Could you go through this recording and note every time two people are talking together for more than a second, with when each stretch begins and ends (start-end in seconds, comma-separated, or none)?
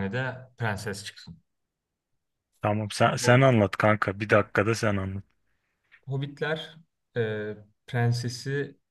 none